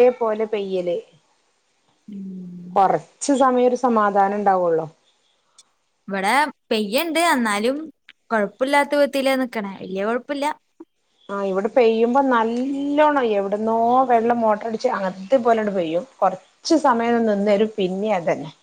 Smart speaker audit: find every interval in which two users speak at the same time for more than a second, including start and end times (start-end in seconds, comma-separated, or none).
none